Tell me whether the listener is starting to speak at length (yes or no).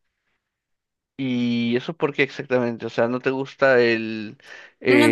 yes